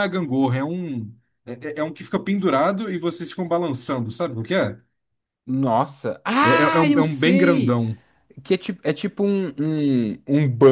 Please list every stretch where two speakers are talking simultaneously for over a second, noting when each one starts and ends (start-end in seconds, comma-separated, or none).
6.4-7.8